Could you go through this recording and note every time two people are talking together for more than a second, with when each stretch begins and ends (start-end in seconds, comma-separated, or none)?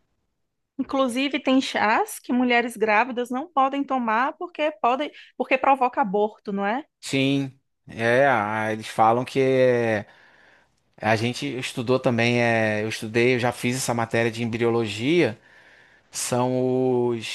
none